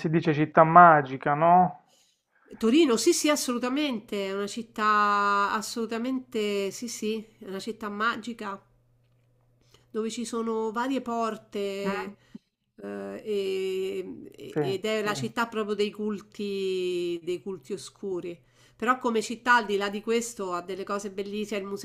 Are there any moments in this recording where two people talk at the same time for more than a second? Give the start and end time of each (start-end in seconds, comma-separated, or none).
none